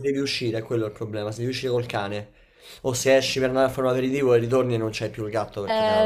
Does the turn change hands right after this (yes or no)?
yes